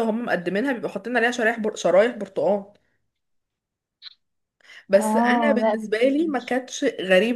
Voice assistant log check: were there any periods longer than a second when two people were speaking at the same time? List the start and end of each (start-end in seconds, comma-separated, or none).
4.9-6.6